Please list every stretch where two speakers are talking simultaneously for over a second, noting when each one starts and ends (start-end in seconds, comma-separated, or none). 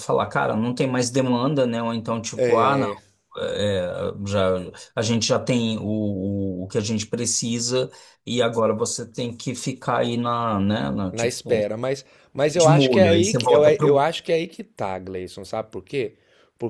12.6-14.0